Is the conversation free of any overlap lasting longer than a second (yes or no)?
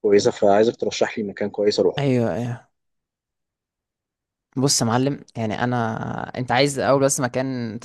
yes